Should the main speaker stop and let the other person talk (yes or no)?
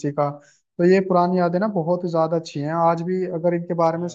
no